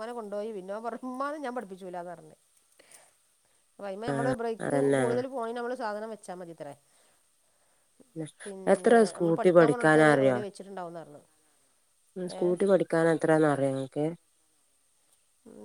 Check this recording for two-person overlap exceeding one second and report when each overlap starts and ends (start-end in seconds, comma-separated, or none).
8.7-10.4